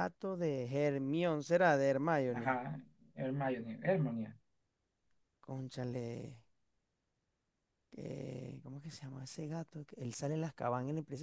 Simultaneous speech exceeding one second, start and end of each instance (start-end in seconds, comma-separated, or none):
none